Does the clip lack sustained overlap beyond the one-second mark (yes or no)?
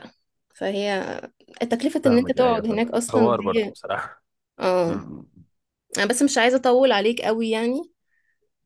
no